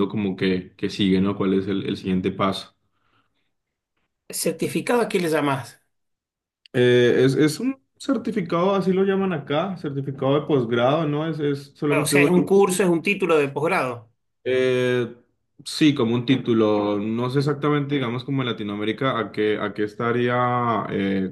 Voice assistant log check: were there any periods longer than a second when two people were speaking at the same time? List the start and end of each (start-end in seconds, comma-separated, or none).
none